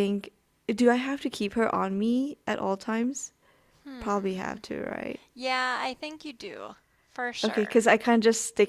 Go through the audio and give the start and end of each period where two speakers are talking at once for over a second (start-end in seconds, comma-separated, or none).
none